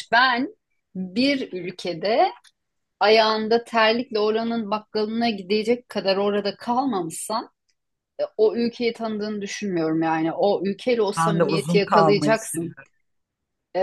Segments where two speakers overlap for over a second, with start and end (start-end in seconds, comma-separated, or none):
11.2-12.8